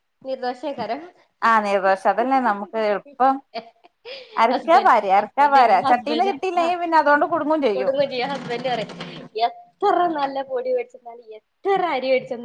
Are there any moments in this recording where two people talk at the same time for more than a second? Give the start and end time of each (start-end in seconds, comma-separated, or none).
4.5-6.7